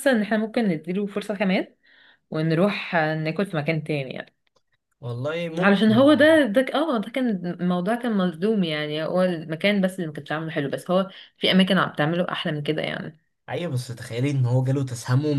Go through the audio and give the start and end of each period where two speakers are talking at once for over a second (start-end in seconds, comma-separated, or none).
none